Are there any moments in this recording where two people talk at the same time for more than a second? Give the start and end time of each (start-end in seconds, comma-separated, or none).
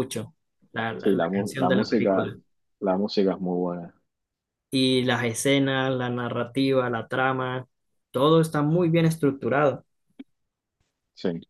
1.0-2.3